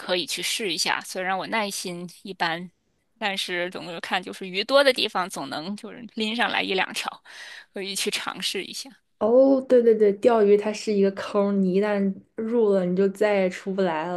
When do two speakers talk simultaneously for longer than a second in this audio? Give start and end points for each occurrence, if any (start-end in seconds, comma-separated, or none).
none